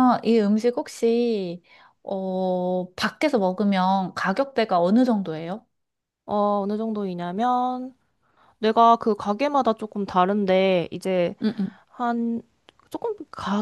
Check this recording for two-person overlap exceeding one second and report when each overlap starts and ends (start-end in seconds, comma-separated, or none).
none